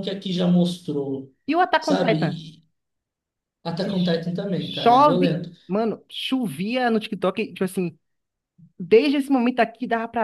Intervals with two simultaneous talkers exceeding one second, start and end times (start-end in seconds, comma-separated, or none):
3.8-5.5